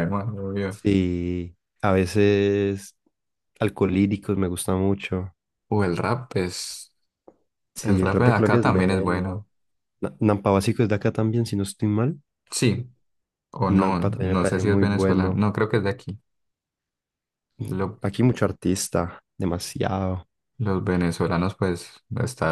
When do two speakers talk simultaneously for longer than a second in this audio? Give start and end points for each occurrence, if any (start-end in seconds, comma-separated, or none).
7.8-9.4, 13.7-15.4